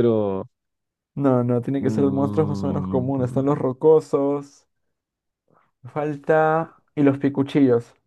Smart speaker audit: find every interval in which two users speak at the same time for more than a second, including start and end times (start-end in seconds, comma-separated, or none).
1.8-3.1